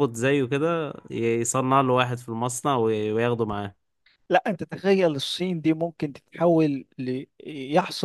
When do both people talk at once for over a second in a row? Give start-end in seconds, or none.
none